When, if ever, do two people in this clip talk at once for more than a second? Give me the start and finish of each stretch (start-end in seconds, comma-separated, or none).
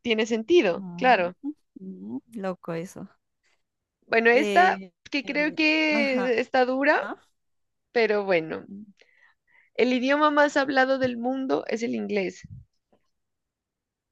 4.3-6.3